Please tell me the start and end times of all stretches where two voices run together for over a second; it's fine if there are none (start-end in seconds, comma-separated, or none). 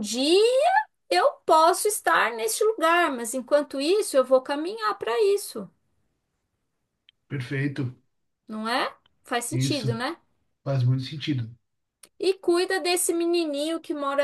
none